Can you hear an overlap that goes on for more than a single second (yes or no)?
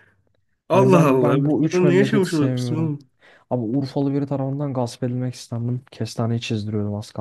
yes